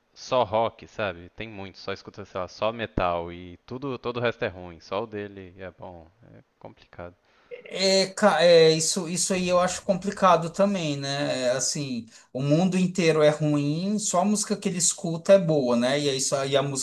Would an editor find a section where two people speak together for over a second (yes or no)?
no